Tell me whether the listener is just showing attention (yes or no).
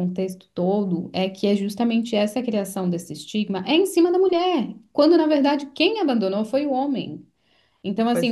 yes